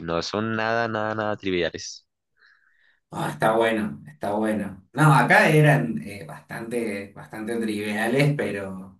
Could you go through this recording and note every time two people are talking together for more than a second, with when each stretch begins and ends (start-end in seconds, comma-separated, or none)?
none